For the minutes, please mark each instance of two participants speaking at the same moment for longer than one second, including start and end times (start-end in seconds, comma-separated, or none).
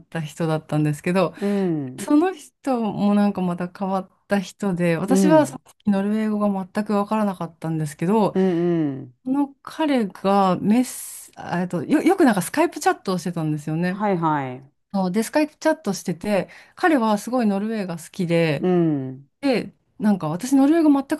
none